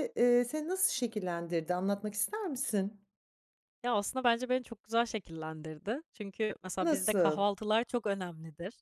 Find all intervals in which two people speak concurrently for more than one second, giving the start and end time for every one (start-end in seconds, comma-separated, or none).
none